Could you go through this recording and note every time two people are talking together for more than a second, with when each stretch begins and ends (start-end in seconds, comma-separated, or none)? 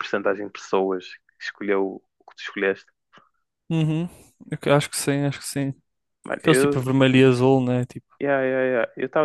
none